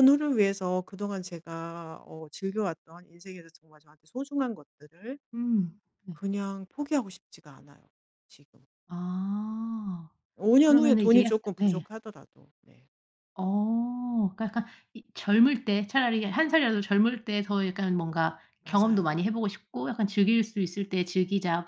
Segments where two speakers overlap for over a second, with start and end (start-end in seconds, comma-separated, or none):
10.6-11.8